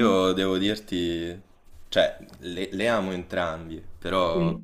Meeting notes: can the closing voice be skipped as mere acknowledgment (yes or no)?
yes